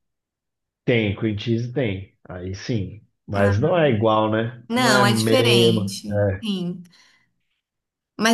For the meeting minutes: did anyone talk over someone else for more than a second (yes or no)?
yes